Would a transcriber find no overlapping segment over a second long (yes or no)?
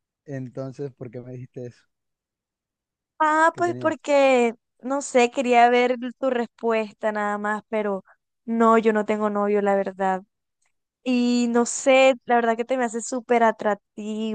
yes